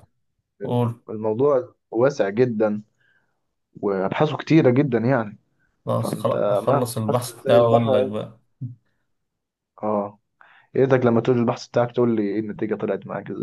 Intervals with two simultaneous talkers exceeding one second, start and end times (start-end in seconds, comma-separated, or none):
6.0-8.1